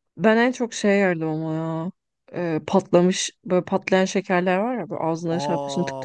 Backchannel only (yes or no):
no